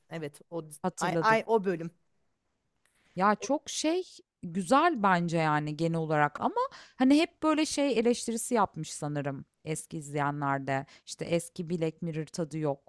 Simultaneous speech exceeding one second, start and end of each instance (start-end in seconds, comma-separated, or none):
none